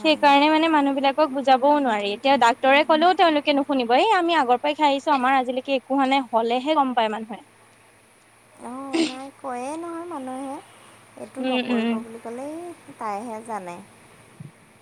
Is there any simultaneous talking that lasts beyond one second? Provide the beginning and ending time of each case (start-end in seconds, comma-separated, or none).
none